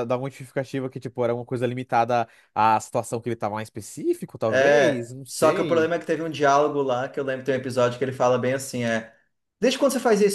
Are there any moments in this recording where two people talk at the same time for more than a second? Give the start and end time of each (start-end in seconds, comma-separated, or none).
4.5-5.9